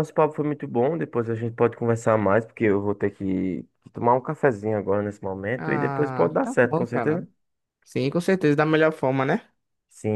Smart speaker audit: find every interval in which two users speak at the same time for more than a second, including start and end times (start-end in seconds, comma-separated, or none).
5.6-7.2